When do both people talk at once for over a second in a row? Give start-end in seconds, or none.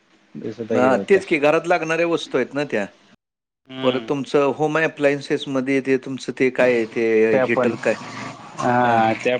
none